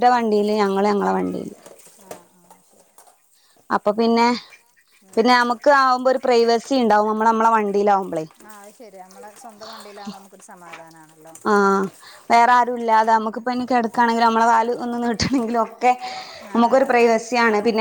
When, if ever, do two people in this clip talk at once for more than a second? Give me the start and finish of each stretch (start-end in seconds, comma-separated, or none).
none